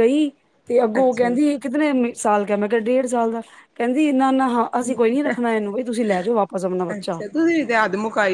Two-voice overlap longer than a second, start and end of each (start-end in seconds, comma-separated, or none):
none